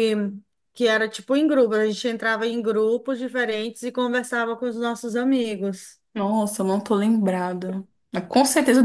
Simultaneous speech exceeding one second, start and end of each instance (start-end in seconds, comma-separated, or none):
none